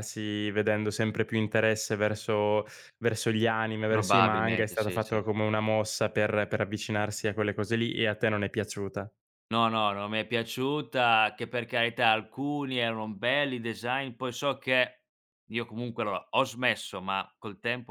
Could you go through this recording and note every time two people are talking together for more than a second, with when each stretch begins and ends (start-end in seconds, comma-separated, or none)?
3.9-5.2